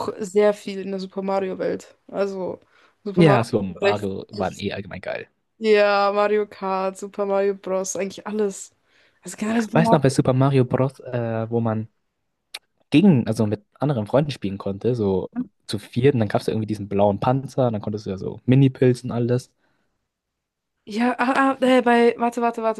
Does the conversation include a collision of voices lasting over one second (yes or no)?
yes